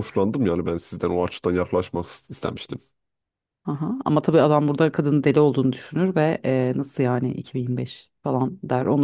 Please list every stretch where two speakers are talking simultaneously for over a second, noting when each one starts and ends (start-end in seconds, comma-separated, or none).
none